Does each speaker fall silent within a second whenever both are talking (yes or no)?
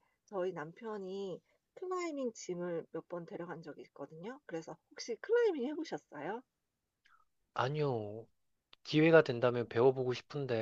yes